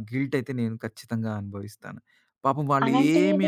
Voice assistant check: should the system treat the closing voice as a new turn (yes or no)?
yes